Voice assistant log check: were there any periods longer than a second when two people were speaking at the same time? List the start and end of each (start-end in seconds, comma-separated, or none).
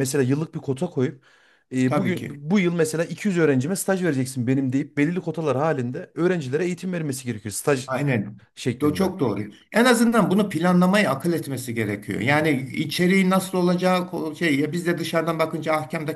none